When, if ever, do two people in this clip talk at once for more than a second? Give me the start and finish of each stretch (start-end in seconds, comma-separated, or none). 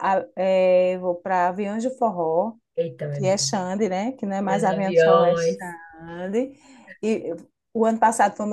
4.5-5.7